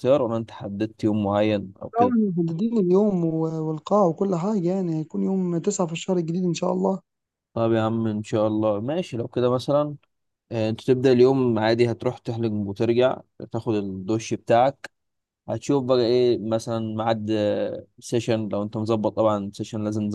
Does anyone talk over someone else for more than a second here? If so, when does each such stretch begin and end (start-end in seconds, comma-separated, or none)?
none